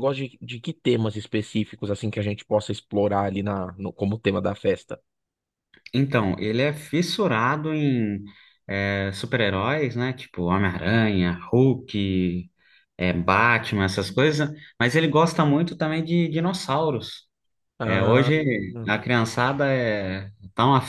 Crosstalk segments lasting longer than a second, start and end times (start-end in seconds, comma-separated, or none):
none